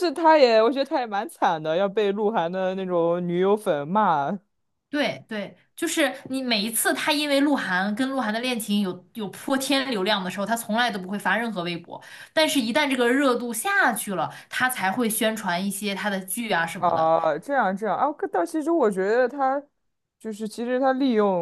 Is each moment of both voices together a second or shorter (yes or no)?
yes